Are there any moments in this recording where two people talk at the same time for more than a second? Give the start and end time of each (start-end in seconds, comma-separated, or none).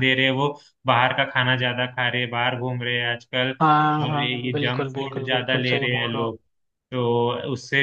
3.6-6.4